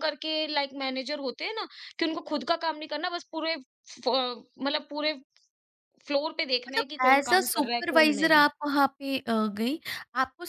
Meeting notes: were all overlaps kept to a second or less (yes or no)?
no